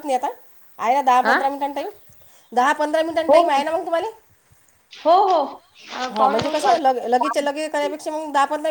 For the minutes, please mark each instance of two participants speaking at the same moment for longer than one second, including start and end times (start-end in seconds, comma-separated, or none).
6.1-7.9